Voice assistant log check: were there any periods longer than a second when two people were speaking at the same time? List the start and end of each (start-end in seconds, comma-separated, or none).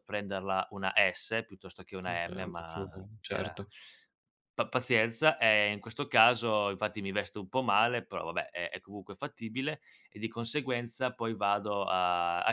2.1-3.6